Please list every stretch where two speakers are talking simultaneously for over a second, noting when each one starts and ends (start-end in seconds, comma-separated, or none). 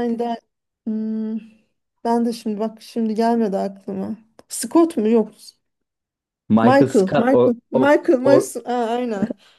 6.6-8.5